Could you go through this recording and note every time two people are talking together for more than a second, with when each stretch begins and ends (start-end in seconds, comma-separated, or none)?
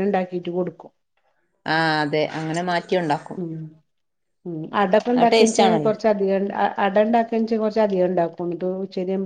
none